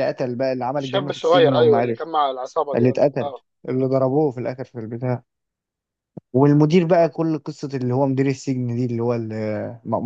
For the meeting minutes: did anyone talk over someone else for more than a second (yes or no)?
yes